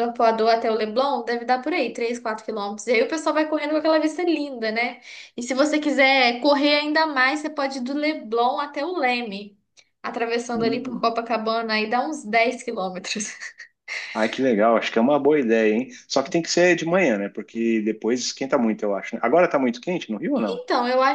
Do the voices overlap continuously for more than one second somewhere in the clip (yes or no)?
no